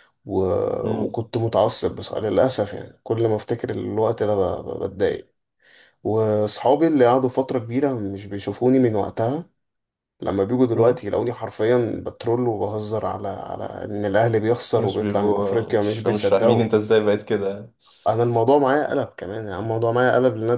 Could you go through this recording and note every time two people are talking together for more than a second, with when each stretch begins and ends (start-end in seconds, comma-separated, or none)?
14.7-16.6